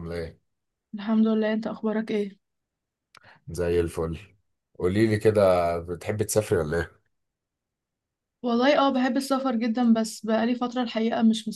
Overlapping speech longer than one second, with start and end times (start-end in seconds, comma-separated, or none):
none